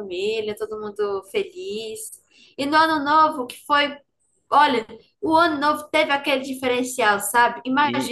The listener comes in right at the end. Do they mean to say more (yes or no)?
no